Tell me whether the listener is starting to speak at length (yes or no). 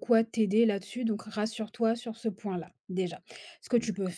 no